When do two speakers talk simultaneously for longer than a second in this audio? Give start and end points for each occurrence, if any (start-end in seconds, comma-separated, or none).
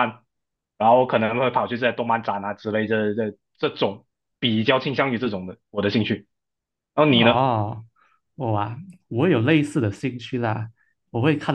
none